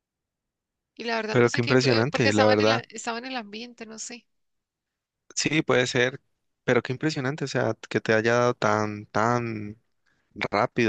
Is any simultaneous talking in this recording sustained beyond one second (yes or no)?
yes